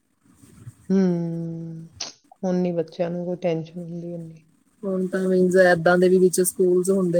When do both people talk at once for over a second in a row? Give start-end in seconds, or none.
none